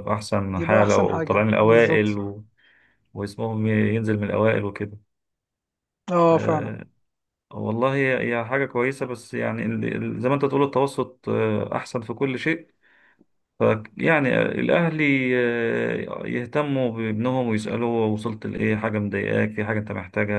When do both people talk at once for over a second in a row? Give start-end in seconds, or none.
0.6-2.2